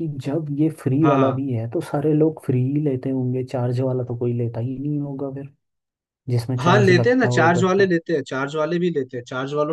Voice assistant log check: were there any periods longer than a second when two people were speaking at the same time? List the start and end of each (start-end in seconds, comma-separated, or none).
6.6-7.9